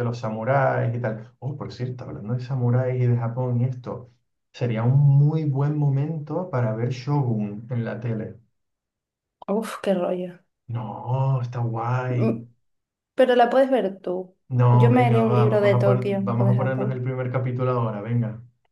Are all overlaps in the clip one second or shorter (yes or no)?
no